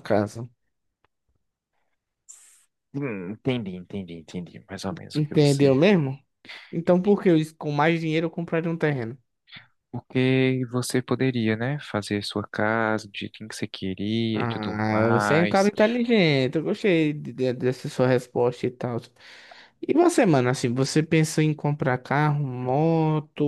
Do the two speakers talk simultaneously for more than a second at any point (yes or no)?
yes